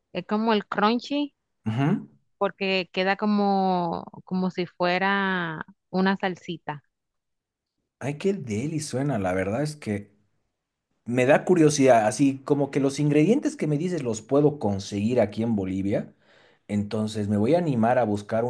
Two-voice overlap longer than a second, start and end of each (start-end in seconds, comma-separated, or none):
none